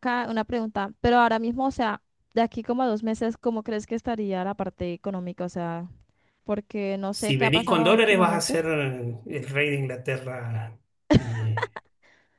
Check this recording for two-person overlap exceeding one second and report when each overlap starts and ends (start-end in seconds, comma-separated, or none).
7.1-8.6